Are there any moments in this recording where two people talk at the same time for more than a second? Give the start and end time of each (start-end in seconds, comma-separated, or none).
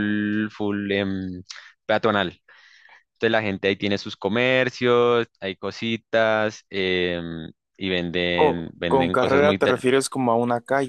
8.3-9.8